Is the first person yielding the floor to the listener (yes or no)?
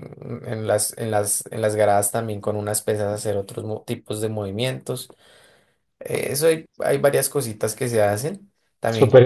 yes